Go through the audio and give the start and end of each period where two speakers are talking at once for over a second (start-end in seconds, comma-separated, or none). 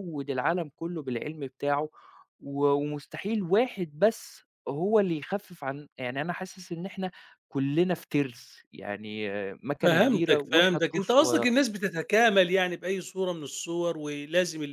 9.8-11.5